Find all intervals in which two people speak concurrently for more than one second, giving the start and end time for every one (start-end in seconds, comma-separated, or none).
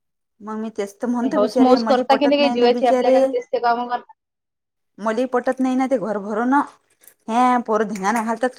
1.2-3.2